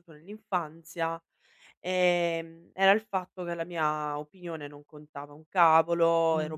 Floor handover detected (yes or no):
no